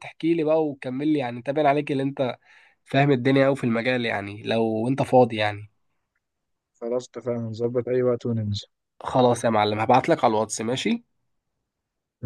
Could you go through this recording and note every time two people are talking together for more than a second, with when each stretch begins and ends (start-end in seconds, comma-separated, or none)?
none